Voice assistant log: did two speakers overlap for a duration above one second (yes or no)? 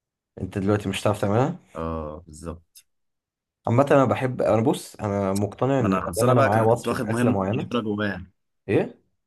yes